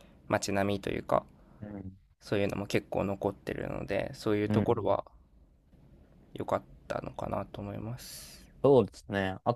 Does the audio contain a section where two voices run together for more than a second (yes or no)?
no